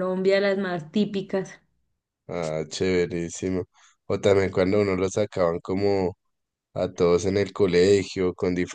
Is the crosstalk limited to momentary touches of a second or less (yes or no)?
yes